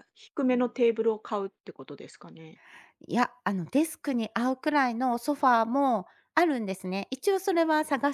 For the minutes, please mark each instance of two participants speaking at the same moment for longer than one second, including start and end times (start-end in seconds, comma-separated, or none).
none